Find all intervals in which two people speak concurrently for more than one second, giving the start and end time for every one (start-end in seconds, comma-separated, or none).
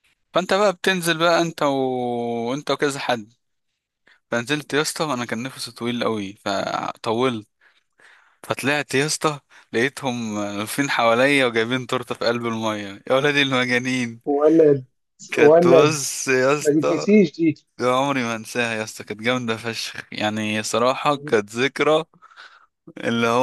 none